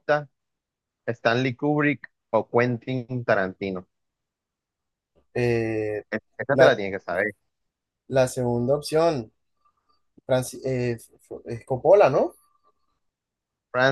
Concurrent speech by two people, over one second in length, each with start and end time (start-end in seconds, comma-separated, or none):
none